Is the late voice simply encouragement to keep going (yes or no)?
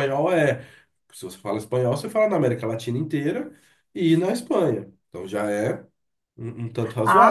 no